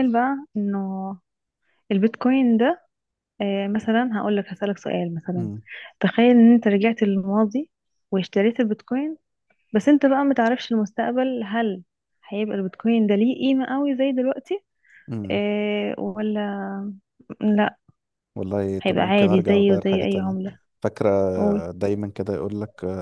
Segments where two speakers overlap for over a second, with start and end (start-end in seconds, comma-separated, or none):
18.8-20.4